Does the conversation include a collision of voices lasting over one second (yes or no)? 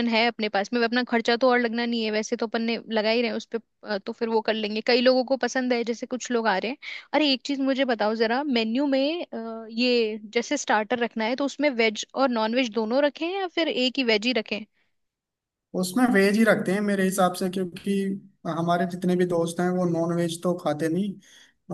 no